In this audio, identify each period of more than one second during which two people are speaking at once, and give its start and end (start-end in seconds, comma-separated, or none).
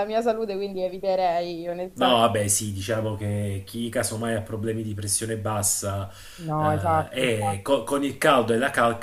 6.6-7.8